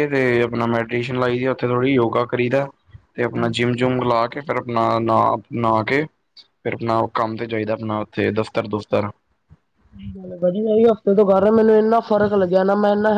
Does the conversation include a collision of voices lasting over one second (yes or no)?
no